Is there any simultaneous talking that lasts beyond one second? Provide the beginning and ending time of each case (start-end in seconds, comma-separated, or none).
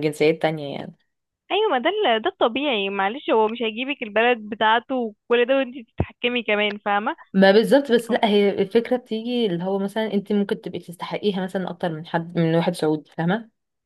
none